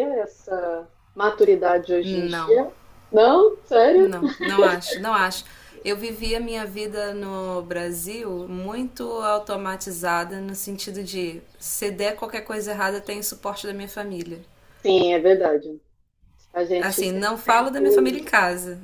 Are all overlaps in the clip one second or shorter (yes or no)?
no